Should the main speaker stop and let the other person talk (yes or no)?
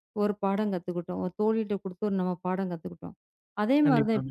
no